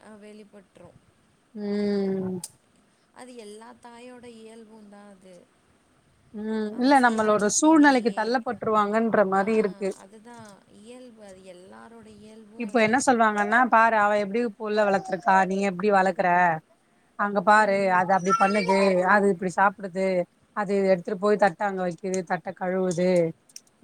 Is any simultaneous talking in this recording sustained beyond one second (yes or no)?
yes